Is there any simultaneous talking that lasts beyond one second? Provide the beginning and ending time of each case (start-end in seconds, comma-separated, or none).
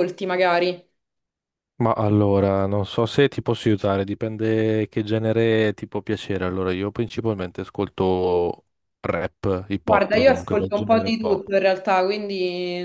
9.8-11.4